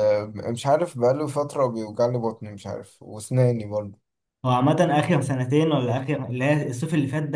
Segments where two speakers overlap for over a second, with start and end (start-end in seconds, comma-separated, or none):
none